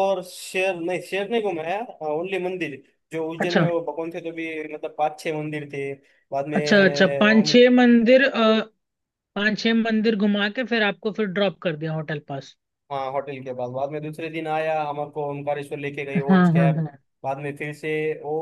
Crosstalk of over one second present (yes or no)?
no